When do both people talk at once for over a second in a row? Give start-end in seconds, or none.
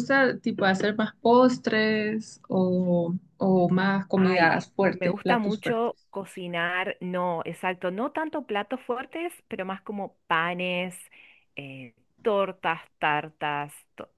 4.2-5.9